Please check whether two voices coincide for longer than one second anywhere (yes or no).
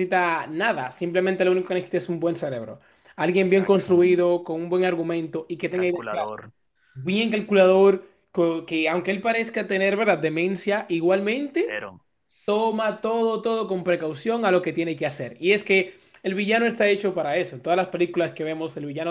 no